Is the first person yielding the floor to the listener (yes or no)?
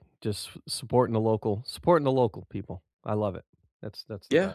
yes